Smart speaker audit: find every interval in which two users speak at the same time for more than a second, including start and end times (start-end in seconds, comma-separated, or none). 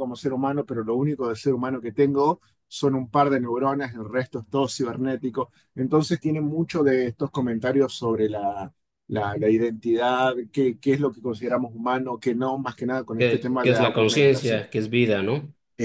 13.2-14.6